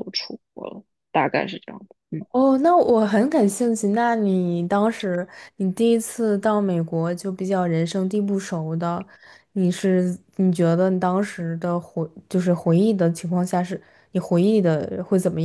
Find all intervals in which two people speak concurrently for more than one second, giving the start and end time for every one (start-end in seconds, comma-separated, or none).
none